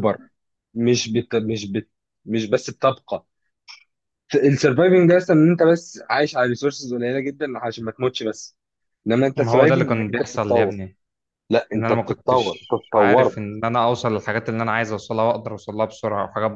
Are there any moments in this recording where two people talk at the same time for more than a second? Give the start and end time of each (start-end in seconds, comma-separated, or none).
9.3-10.7, 11.8-13.4